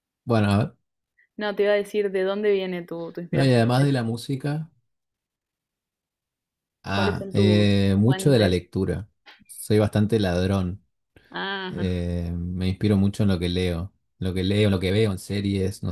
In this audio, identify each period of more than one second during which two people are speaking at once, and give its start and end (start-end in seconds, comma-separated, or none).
6.9-8.6